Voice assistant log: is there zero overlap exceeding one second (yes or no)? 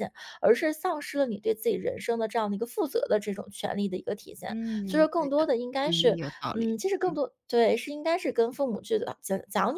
no